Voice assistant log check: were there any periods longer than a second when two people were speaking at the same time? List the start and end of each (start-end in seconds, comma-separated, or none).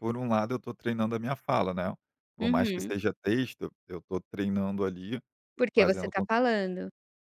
none